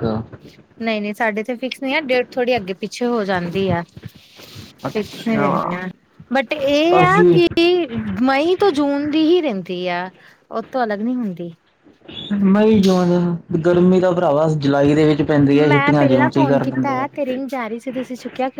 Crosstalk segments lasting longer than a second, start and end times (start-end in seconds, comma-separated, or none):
15.7-17.1